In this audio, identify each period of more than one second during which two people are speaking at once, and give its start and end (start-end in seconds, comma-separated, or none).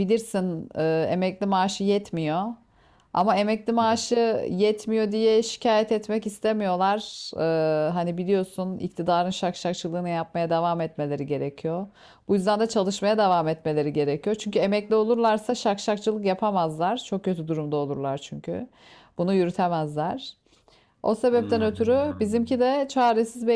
21.4-22.6